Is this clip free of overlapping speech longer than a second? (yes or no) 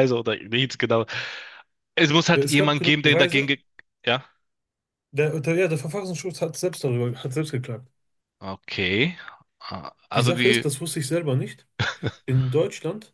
no